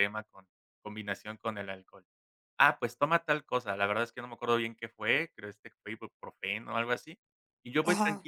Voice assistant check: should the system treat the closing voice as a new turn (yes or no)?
no